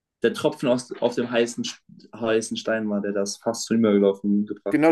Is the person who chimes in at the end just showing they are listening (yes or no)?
no